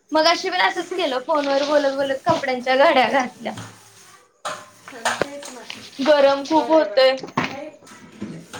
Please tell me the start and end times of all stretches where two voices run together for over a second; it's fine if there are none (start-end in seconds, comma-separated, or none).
none